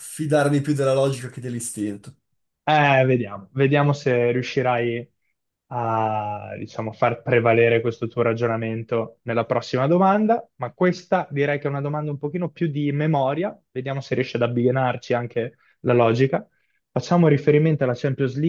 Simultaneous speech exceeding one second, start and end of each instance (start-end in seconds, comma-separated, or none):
none